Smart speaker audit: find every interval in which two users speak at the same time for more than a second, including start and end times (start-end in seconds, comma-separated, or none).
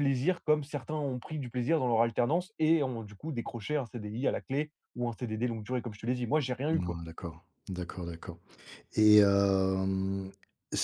none